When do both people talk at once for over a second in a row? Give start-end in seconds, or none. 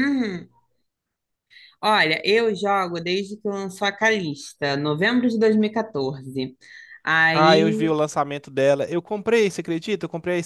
none